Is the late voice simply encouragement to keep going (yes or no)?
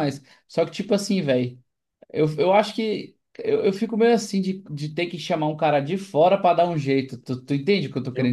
no